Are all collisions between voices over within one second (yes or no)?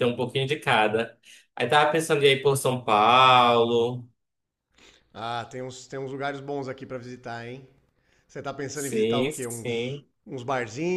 no